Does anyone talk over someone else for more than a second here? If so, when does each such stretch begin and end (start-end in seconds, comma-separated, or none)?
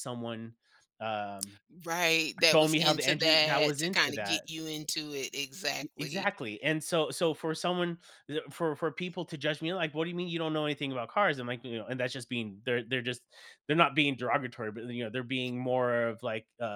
2.5-4.4